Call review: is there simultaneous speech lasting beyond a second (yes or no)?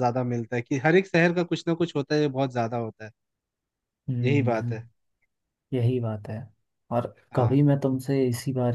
no